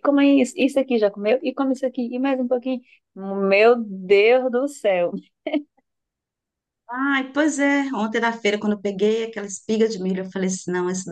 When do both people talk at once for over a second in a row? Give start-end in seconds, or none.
none